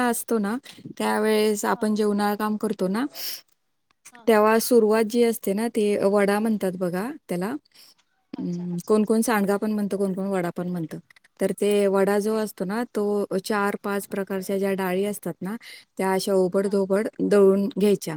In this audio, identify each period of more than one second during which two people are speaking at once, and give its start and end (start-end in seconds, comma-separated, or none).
8.4-9.8